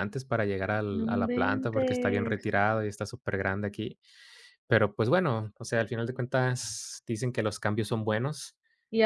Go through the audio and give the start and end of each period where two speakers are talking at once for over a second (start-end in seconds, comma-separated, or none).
1.0-2.5